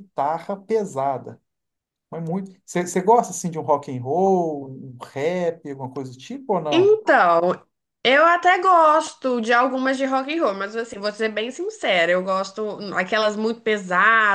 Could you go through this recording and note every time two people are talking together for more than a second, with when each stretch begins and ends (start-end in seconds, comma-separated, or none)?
none